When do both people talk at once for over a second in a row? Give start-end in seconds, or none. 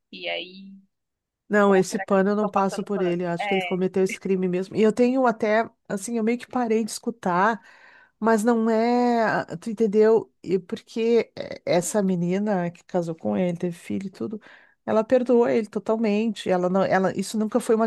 1.6-3.8